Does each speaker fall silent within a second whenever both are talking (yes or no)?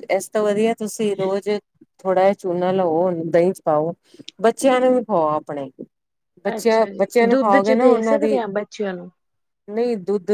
no